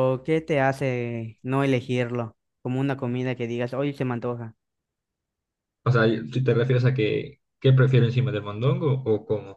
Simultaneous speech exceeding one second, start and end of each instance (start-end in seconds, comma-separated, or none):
none